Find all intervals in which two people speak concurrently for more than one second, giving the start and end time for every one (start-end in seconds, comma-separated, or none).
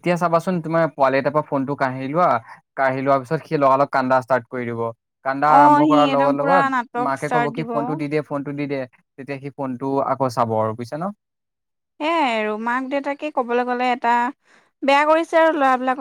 5.5-7.7